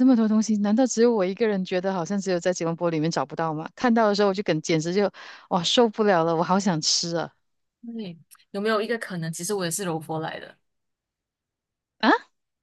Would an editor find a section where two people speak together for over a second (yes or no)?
no